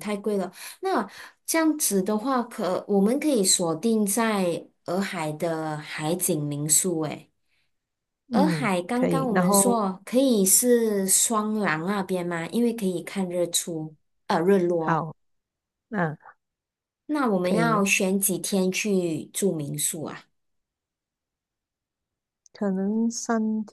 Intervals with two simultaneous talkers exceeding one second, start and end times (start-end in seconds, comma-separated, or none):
8.3-9.8